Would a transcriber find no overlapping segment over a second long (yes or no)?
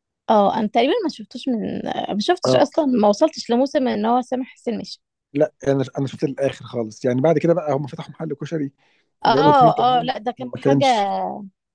no